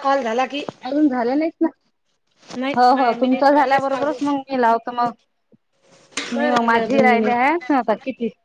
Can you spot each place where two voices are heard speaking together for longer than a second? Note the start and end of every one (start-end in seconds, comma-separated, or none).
2.8-4.2, 6.4-7.6